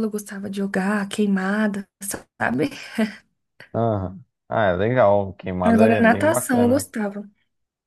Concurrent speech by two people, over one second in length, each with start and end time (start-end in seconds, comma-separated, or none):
5.6-6.8